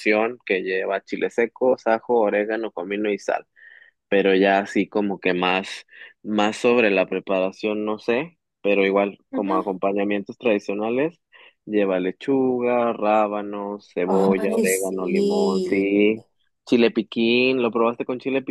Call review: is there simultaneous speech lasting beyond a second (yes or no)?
yes